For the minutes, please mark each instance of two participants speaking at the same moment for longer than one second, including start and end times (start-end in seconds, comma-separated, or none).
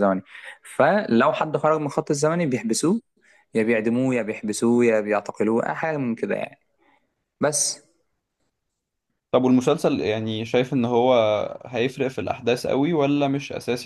none